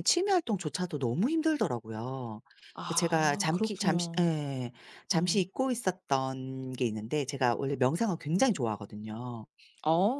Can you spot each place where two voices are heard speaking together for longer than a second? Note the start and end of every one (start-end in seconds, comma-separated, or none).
3.0-4.3